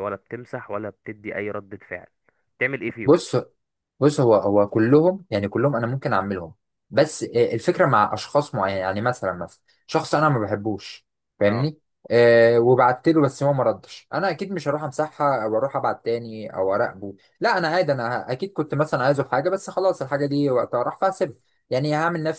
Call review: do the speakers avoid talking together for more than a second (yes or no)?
yes